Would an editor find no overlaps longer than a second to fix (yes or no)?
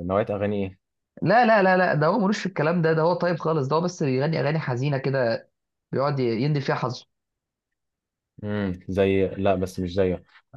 yes